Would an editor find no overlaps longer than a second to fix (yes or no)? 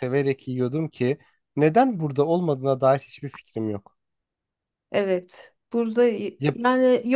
yes